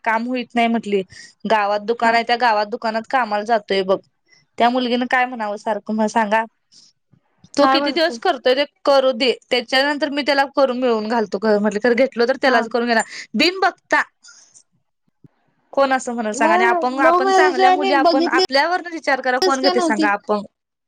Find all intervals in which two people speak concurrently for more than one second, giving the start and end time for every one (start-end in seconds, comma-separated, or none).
16.4-18.6